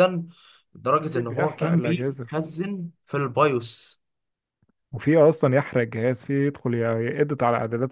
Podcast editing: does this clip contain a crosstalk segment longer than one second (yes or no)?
yes